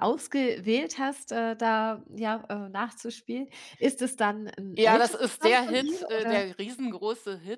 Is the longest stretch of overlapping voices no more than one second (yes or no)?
no